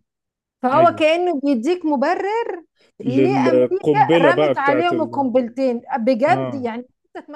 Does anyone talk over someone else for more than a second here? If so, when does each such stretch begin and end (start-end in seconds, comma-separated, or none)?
3.0-5.3